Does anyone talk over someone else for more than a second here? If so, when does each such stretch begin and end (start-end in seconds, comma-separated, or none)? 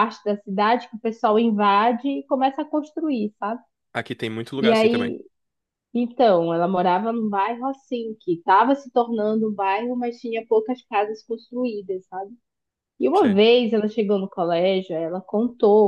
none